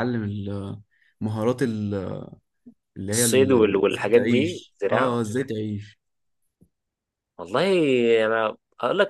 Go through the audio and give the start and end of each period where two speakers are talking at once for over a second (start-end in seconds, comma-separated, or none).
3.1-5.2